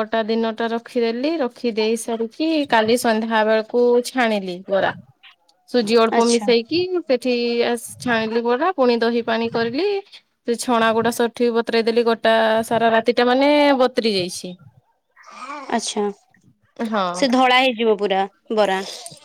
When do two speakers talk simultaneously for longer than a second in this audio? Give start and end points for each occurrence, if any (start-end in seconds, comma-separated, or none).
none